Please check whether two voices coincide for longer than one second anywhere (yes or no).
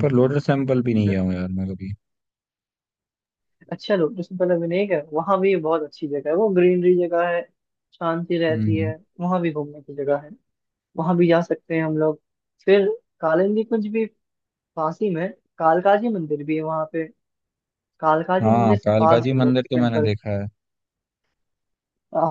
yes